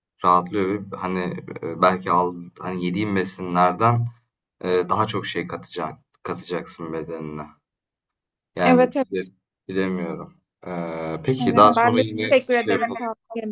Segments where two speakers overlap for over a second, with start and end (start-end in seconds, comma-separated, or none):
11.4-13.0